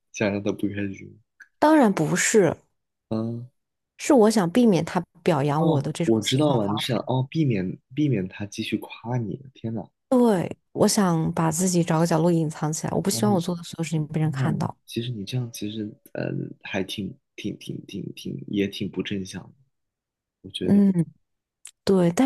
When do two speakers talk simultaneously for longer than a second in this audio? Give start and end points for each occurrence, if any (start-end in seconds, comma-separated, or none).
5.6-7.1